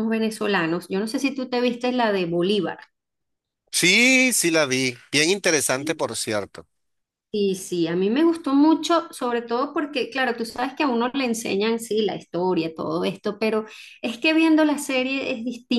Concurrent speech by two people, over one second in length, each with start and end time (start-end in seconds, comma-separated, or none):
none